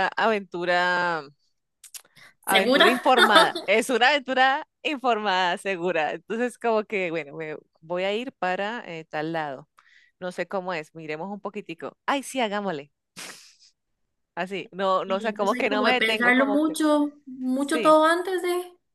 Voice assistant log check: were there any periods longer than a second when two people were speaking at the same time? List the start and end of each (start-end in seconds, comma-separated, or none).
15.0-16.8